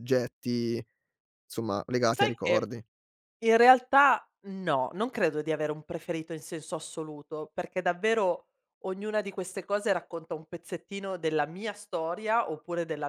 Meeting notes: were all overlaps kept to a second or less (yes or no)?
yes